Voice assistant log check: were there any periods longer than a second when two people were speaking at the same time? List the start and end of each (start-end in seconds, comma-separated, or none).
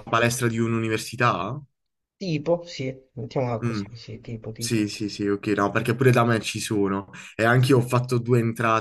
none